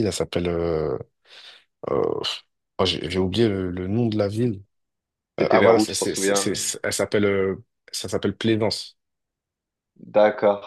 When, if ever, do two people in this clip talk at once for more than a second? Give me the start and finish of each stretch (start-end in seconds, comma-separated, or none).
5.4-6.6